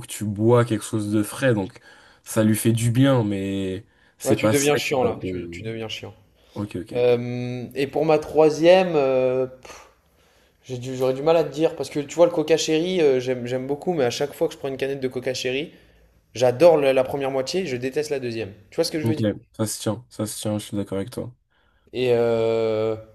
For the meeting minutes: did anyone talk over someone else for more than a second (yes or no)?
yes